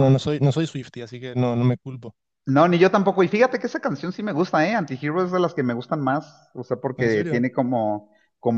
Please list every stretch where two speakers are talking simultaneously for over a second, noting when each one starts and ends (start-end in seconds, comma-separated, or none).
none